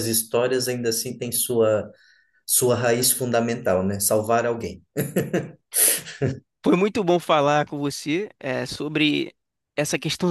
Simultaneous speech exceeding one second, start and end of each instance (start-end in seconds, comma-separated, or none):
none